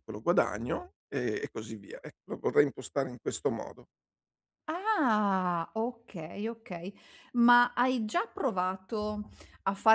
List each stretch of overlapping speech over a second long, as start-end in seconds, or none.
none